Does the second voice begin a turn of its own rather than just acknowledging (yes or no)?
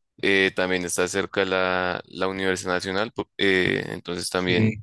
no